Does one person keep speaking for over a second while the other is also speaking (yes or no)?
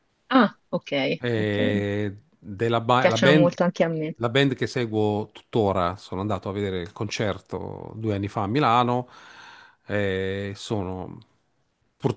no